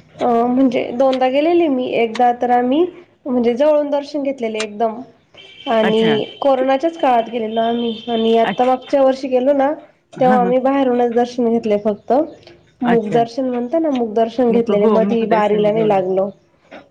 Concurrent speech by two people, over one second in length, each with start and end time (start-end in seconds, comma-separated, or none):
14.5-16.1